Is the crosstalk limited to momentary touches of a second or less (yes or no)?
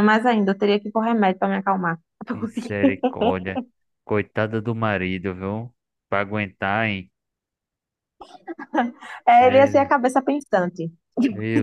yes